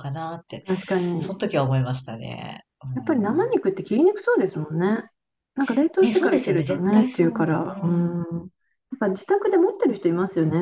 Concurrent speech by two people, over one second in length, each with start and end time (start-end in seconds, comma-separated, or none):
6.0-8.2